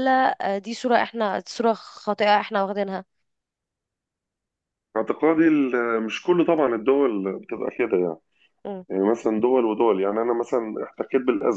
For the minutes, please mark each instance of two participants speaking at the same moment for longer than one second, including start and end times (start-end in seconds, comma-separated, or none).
none